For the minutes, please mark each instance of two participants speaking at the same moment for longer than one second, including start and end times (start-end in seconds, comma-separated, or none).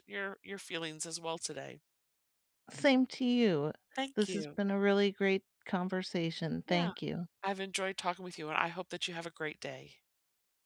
none